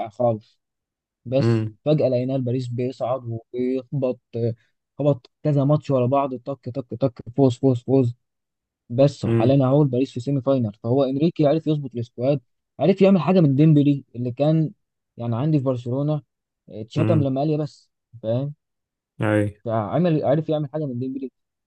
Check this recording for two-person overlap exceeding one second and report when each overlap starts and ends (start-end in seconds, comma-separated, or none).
none